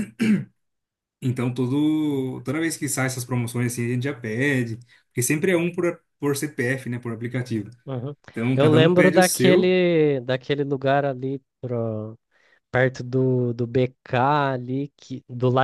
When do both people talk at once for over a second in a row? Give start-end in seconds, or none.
8.5-9.7